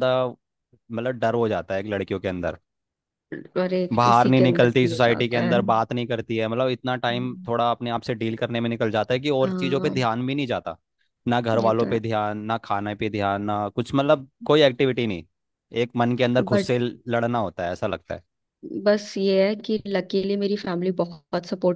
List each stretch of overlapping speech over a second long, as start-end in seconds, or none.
4.0-5.5